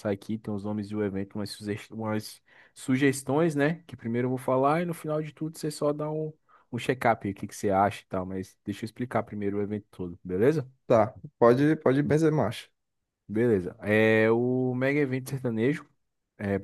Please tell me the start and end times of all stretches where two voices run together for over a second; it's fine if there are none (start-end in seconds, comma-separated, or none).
none